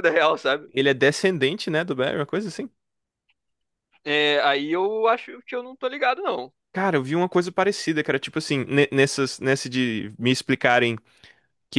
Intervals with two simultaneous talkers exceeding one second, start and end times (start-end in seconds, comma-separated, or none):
none